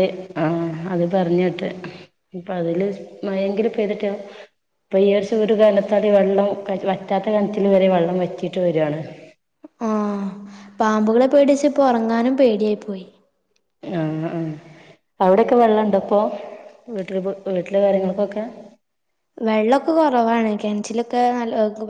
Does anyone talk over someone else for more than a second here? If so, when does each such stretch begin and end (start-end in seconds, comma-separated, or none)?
none